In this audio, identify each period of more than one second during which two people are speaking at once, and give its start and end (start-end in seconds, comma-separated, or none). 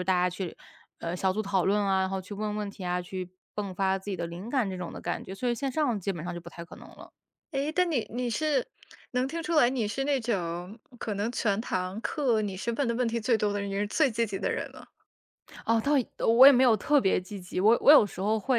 none